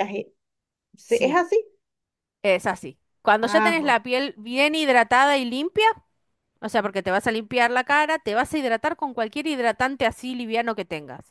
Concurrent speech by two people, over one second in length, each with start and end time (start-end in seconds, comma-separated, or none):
none